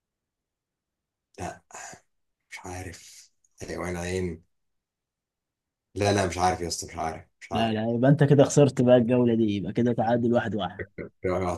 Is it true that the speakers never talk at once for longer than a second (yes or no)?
yes